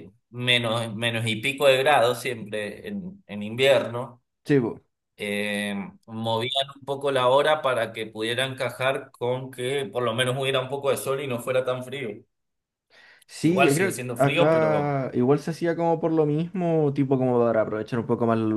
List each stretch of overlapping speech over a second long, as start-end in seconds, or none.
13.4-15.0